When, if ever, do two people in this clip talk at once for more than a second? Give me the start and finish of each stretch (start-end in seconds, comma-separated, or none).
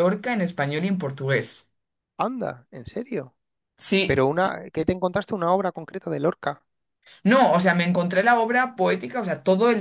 none